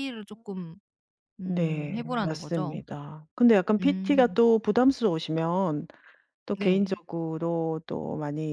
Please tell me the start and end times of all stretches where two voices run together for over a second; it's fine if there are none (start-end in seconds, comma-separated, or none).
1.4-2.8